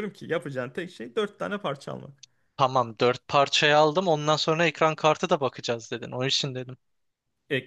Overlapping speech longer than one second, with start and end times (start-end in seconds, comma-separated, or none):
none